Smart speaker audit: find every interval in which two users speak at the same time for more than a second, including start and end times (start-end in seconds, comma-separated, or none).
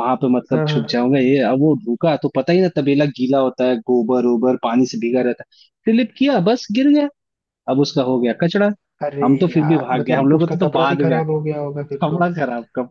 9.2-11.2